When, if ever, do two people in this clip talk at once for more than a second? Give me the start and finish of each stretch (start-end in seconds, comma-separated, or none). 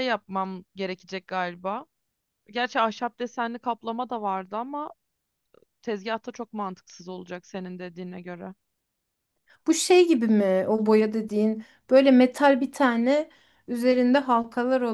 none